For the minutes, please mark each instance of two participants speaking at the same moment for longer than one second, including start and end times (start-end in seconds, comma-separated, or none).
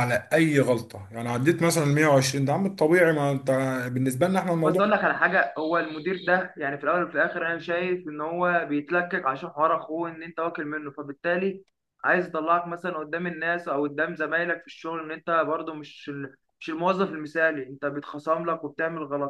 none